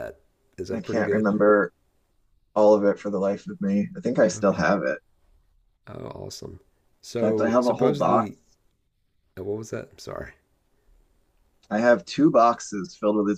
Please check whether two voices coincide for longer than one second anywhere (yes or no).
yes